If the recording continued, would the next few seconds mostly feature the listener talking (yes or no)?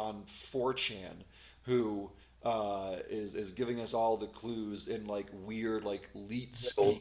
no